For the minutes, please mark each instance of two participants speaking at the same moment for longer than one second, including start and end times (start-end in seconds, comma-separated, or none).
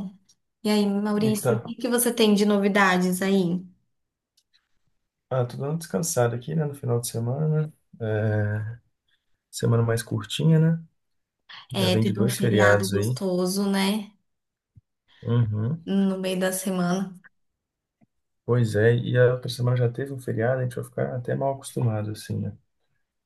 11.7-13.2